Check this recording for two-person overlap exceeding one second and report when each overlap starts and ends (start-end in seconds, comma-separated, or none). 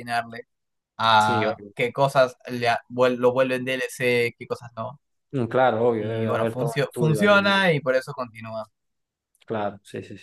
6.0-7.7